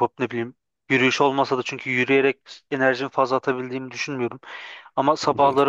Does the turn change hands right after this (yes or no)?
no